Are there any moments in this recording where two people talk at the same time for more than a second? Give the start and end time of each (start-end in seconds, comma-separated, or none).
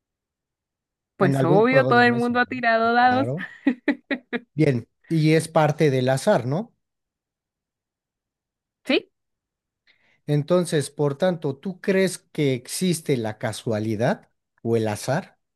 1.2-3.3